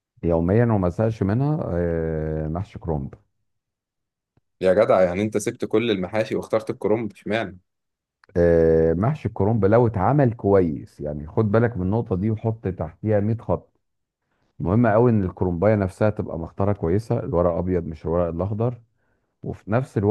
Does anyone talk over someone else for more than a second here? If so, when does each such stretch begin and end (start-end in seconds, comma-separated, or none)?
none